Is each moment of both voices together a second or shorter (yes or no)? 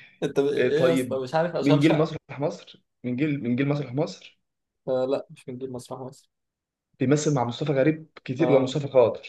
no